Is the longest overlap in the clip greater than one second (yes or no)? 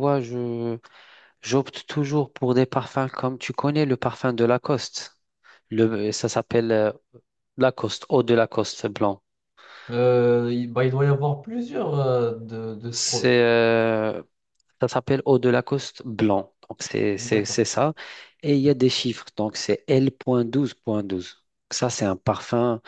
no